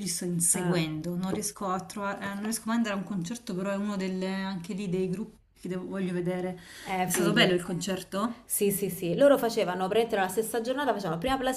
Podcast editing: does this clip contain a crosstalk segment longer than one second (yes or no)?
no